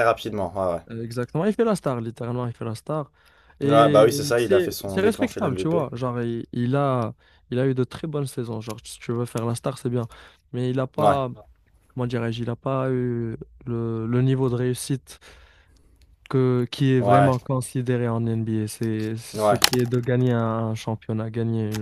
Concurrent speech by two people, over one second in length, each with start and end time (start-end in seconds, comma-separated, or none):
3.6-5.8